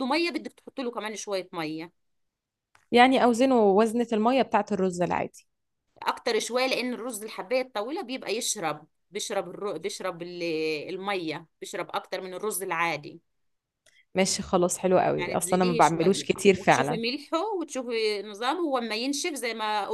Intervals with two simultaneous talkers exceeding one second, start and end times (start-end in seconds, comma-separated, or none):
15.2-17.0